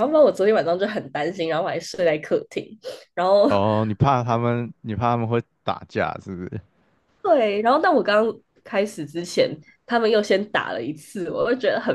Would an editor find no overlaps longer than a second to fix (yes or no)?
yes